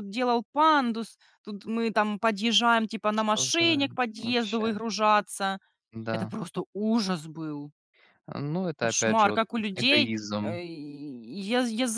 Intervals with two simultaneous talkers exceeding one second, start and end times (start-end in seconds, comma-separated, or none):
3.1-4.6, 8.8-10.6